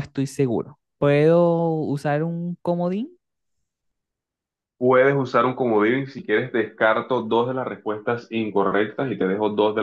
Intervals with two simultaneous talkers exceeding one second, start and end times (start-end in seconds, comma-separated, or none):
none